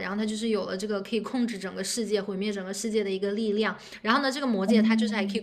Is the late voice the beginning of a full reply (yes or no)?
no